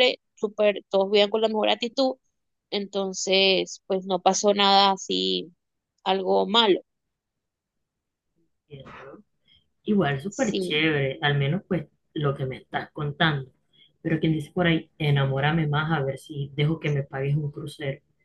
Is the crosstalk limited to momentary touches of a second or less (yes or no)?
yes